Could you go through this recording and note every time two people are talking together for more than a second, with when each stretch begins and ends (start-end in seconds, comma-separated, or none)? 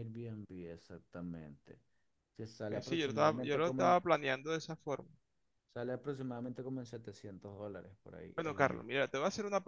2.7-4.0